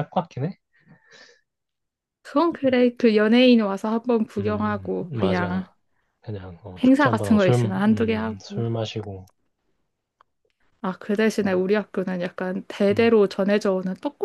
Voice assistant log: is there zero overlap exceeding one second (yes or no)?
no